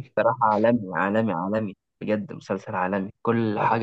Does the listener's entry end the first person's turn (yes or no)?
no